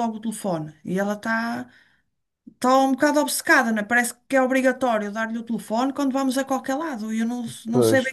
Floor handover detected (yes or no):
no